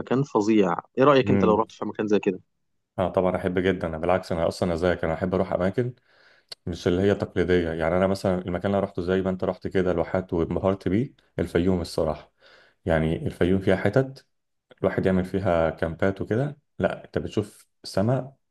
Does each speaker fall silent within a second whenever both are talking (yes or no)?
yes